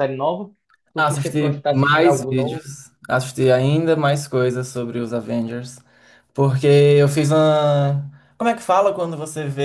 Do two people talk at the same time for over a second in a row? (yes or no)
yes